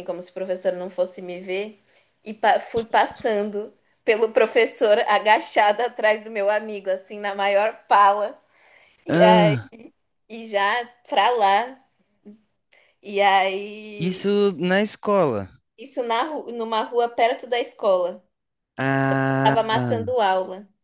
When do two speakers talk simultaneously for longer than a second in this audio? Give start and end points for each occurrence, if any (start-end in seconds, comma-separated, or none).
none